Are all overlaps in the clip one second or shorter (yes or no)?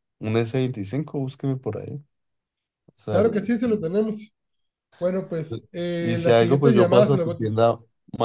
no